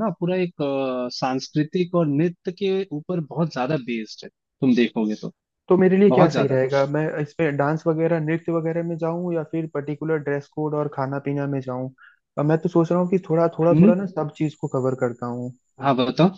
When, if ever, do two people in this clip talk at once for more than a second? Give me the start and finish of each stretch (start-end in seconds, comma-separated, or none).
none